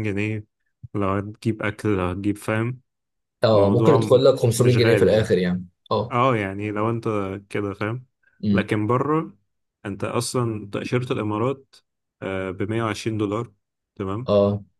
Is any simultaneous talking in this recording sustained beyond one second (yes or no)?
yes